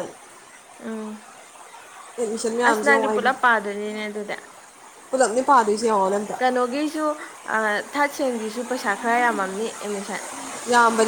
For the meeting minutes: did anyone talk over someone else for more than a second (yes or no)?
no